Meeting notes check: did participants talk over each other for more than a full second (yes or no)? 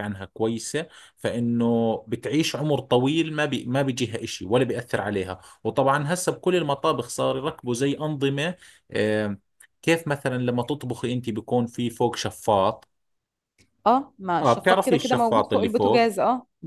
yes